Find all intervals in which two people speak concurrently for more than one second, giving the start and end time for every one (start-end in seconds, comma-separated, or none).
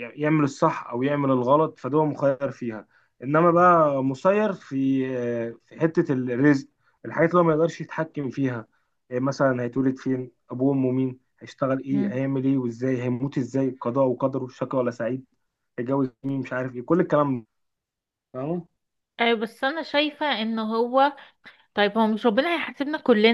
none